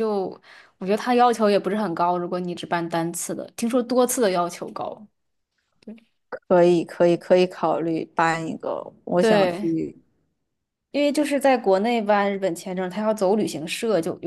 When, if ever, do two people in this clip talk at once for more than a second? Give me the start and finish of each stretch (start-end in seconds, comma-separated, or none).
none